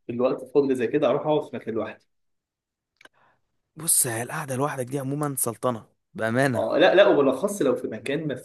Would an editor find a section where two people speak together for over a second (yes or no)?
no